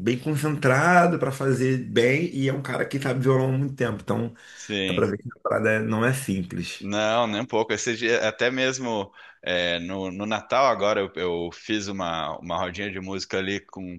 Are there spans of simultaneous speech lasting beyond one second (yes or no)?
no